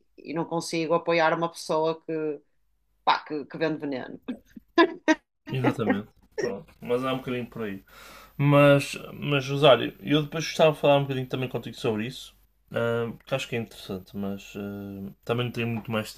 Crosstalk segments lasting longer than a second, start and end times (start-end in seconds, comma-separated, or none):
none